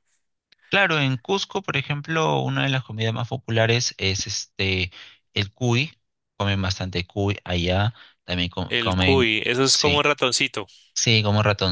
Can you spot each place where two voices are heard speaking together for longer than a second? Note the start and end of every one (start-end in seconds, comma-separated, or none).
8.7-10.1